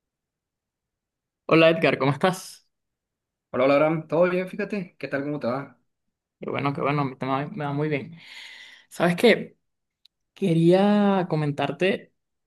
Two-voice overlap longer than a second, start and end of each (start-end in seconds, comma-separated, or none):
none